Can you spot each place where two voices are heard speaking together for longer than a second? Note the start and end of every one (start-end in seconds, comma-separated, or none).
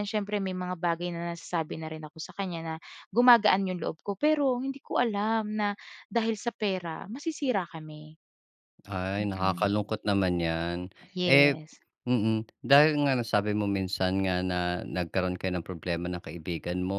none